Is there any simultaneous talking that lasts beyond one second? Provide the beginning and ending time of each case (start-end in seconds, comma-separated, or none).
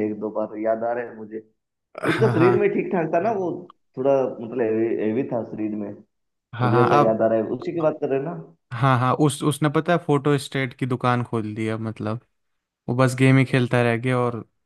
none